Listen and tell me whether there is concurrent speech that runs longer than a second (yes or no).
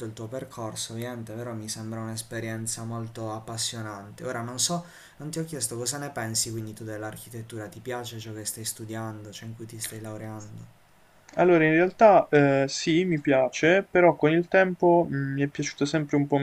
no